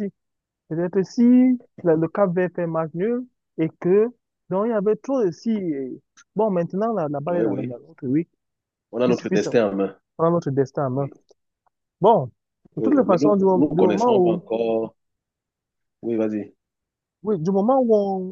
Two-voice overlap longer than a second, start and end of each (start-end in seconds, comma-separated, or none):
12.8-14.4